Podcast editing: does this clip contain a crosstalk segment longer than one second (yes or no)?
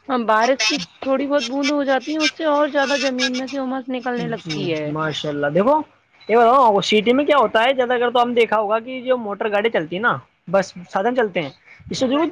no